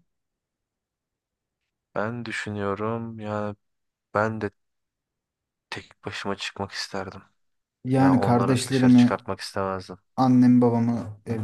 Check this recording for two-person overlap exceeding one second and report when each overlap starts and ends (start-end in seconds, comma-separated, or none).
8.0-9.2